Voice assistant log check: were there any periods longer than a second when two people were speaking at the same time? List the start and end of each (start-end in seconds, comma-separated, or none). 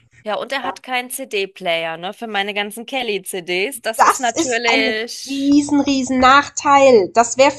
3.9-5.5